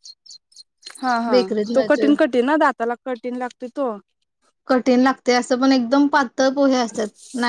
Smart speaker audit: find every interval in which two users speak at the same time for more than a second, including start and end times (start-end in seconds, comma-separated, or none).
none